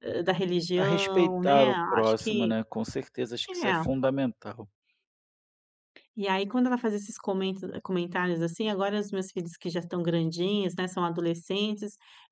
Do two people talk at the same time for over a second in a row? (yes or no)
yes